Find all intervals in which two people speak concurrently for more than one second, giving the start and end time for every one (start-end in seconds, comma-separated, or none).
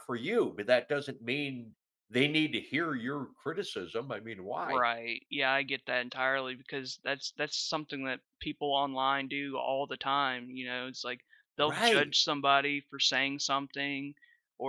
none